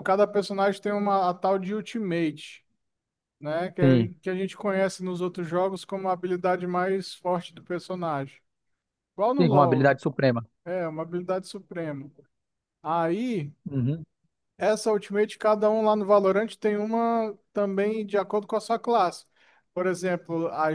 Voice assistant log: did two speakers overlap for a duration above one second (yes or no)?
no